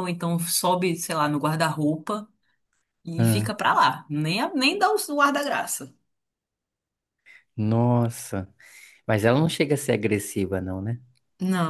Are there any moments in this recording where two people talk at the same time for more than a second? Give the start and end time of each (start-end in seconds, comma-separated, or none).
none